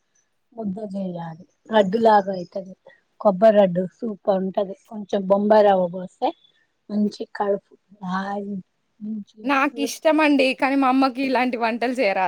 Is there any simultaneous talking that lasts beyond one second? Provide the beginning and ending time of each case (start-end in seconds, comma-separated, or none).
none